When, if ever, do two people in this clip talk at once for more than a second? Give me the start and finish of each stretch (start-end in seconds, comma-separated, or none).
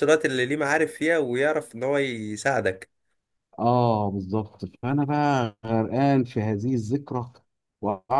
none